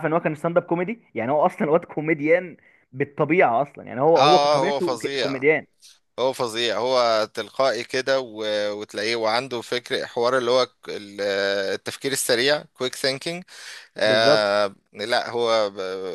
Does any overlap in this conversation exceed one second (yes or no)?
yes